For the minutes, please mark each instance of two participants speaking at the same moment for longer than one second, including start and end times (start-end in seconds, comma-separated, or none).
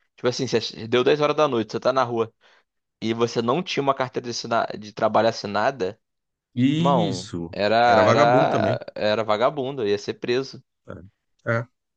6.8-8.8